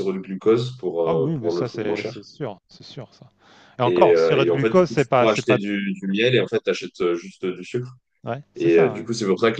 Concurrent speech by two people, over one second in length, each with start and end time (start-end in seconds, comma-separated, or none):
1.0-2.3, 3.8-5.6